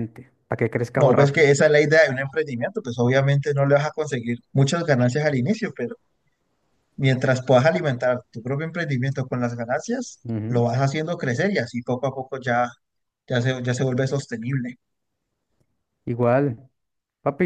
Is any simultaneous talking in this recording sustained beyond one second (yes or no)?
no